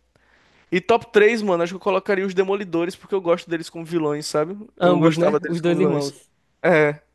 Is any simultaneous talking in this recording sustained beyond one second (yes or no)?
yes